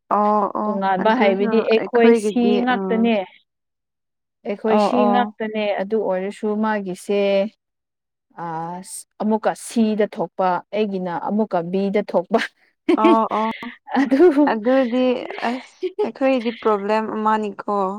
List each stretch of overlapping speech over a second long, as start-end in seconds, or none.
0.6-3.0